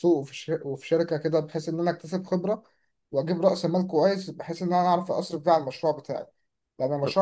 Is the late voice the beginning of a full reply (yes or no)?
no